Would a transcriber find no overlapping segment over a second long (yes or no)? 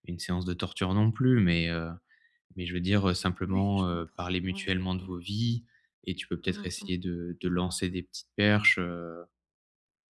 no